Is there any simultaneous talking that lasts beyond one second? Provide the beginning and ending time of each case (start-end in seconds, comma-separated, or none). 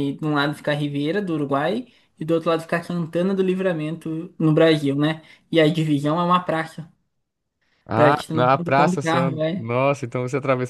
8.0-9.7